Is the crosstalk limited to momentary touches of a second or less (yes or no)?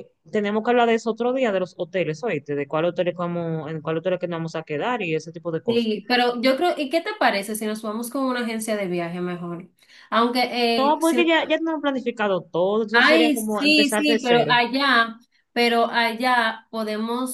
no